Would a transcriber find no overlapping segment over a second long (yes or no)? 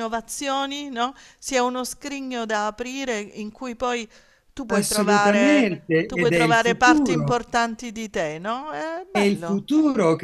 no